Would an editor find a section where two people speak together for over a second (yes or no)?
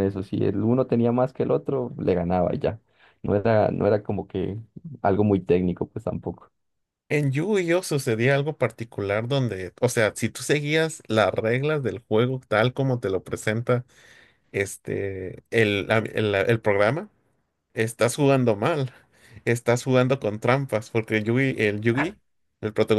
no